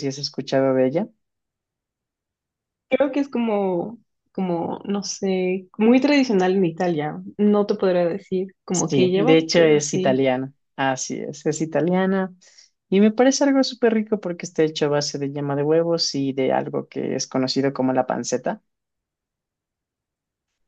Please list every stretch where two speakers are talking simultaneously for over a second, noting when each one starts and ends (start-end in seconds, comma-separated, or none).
8.7-10.2